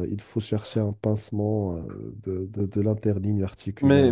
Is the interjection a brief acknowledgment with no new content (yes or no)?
no